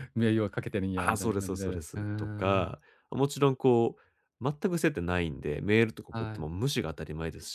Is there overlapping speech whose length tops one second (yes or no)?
yes